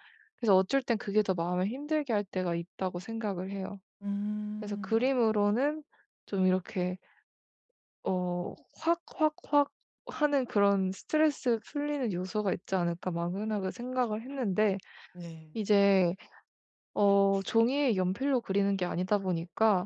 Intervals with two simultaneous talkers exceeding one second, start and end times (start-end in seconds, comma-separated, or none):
none